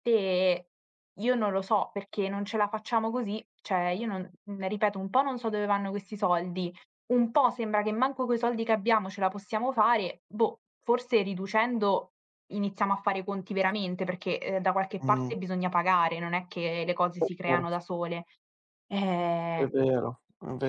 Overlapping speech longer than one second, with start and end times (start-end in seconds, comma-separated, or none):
none